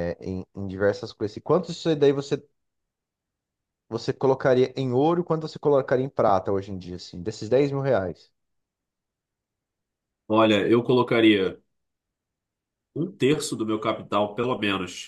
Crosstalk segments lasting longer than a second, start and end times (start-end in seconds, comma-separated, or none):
none